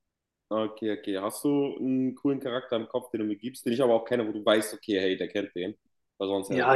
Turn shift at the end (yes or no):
yes